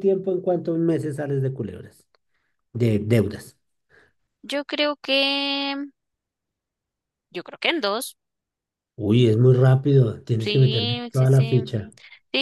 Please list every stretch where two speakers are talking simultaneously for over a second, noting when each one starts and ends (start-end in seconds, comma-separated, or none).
10.4-11.6